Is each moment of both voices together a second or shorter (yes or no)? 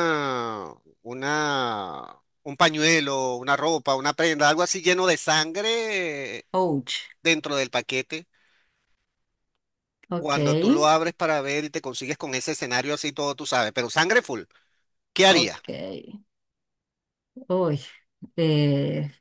yes